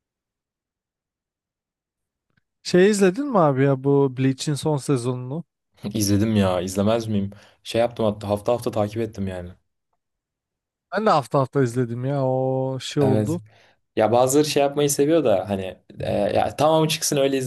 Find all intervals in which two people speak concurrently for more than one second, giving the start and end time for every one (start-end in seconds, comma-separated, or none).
none